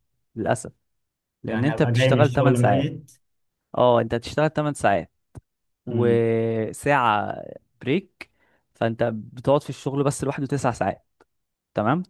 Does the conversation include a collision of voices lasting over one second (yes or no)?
yes